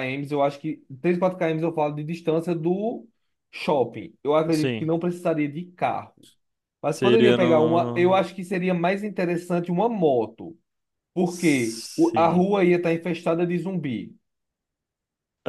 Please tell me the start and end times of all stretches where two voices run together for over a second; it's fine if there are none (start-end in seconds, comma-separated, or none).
6.9-8.2, 11.2-12.5